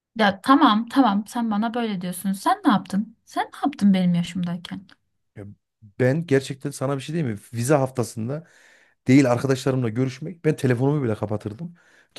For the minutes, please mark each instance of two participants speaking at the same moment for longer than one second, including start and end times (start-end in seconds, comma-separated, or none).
none